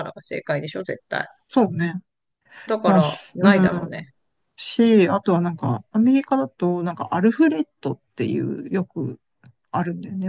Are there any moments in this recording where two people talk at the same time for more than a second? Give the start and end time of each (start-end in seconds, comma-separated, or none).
2.9-4.1